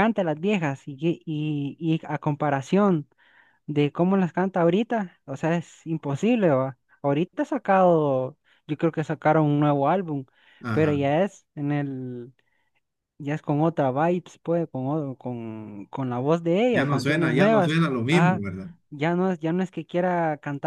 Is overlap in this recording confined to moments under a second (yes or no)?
no